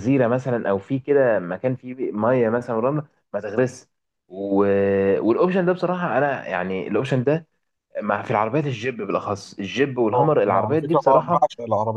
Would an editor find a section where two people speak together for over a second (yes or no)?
yes